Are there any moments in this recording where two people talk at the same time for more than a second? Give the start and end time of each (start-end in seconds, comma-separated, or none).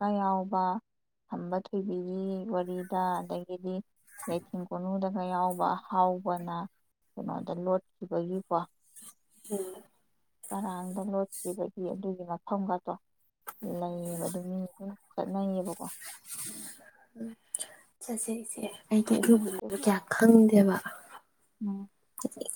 none